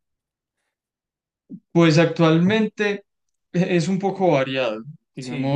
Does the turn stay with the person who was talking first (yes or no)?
yes